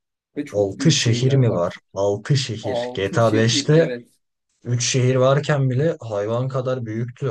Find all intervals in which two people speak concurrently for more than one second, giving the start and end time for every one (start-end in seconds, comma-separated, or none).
0.5-1.8, 2.6-3.9